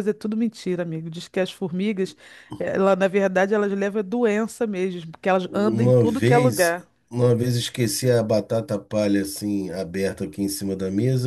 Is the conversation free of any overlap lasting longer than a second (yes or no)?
no